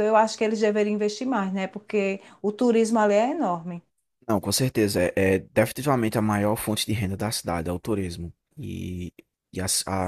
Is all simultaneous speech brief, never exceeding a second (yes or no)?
yes